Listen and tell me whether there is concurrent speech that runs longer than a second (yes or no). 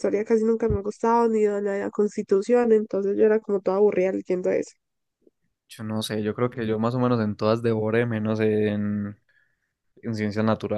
no